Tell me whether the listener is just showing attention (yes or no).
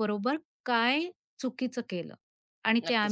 no